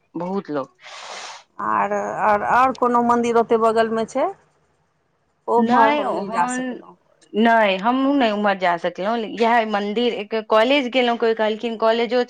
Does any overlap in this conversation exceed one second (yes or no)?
no